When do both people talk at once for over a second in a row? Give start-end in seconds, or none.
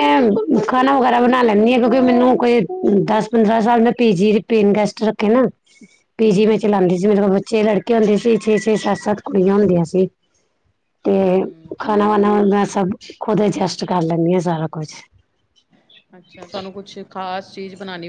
none